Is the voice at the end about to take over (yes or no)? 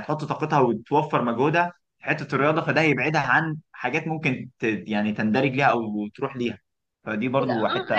yes